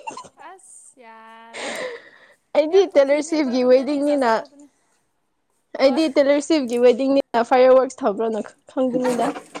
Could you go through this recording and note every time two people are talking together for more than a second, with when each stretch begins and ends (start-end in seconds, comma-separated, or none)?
2.7-4.4